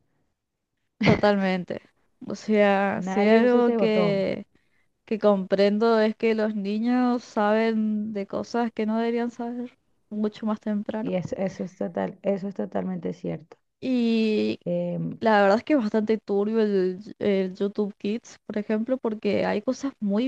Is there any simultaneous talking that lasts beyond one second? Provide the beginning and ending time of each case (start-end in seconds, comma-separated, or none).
3.0-4.2